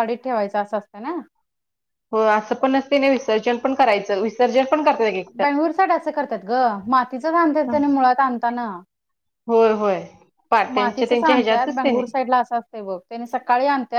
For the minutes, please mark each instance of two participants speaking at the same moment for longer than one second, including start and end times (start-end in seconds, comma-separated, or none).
10.7-12.0